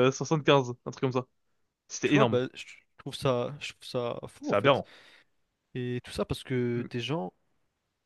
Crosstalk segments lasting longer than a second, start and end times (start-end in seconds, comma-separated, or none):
none